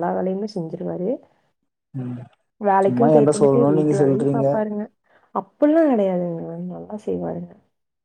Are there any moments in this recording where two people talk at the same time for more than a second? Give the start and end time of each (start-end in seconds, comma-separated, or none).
2.8-4.5